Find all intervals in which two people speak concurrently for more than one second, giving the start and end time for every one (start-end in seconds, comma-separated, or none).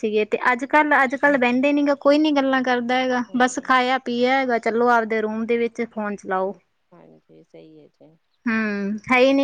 none